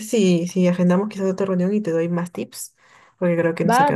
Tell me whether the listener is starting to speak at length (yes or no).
yes